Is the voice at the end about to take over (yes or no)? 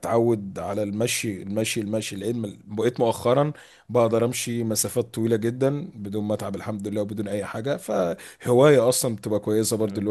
yes